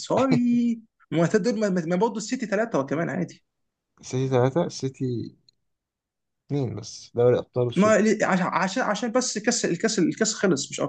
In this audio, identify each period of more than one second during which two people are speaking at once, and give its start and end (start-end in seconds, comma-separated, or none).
none